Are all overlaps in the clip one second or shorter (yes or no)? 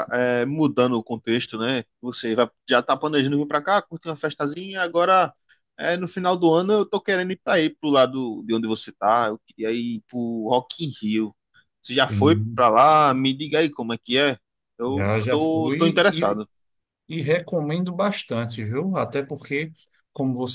no